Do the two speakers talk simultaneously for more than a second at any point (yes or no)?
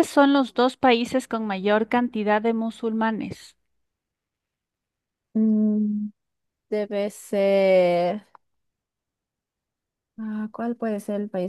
no